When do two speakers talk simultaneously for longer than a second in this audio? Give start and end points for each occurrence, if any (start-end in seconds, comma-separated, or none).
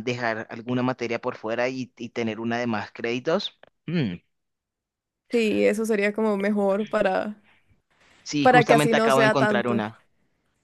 8.4-9.8